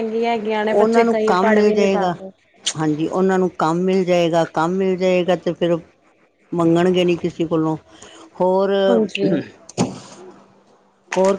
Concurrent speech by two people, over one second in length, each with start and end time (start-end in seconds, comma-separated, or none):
0.7-2.1